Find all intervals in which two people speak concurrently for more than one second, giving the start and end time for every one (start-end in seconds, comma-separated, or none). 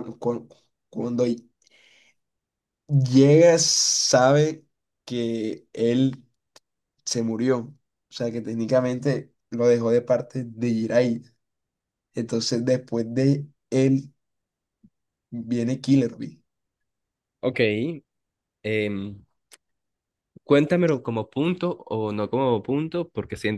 none